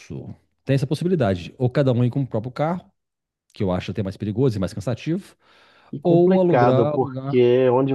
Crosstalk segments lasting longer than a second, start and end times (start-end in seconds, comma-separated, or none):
6.0-7.4